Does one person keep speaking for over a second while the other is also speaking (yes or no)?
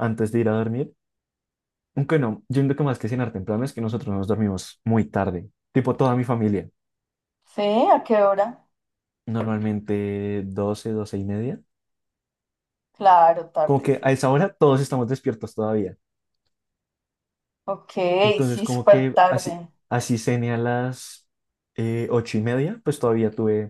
yes